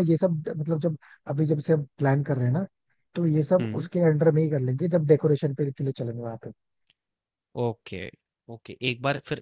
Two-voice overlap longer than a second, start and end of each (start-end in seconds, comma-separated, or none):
none